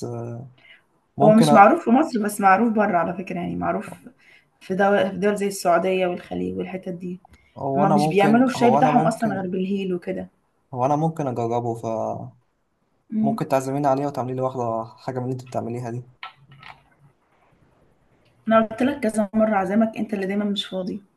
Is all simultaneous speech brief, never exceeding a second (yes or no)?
no